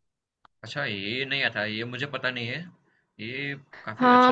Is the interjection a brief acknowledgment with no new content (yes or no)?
no